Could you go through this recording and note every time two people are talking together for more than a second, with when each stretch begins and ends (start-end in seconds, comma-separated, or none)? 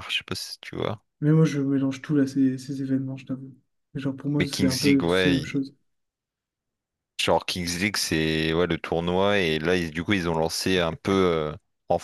4.4-5.6